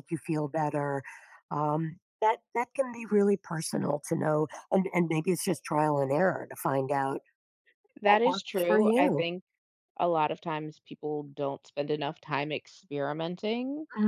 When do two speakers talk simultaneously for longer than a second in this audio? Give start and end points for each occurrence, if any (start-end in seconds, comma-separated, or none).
8.0-9.3